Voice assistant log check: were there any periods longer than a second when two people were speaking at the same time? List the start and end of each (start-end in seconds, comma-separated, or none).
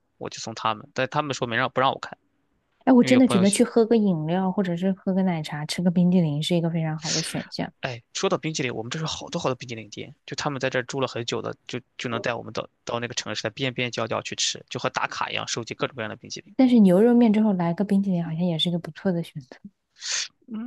none